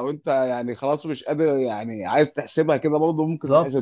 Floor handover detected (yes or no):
yes